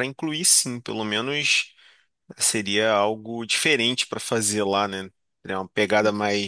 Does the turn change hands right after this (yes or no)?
no